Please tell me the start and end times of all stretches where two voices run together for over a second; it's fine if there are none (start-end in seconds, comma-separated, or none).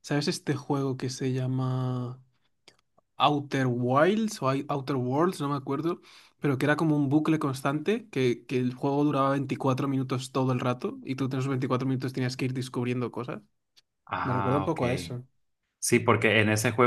none